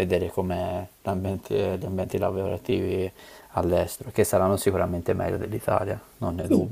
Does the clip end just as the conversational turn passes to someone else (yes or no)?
yes